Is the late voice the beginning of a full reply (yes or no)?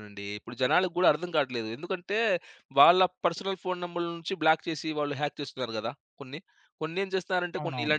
no